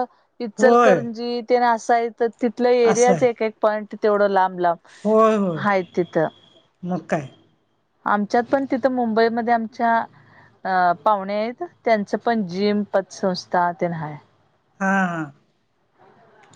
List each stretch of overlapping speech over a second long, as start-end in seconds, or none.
none